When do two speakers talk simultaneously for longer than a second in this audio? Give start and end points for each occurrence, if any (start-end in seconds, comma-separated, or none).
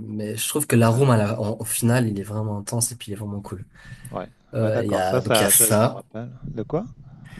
4.5-6.0